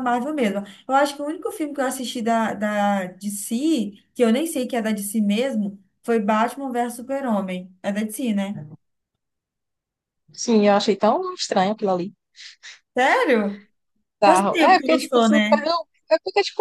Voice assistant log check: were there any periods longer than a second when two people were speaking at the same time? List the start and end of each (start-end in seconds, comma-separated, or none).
14.2-15.6